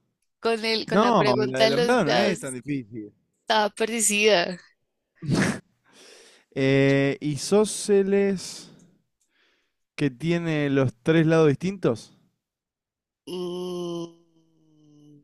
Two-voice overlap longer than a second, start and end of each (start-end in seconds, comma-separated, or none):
0.9-2.4